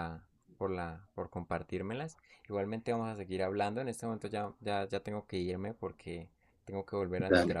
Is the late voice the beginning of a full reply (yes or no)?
no